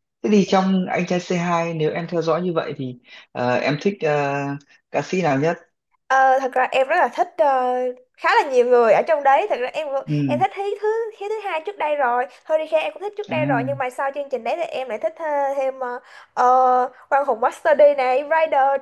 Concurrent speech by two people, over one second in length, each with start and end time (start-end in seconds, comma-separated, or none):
none